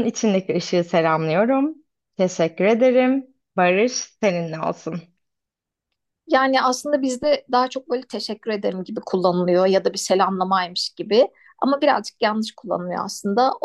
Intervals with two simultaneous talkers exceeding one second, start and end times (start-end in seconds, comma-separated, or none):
none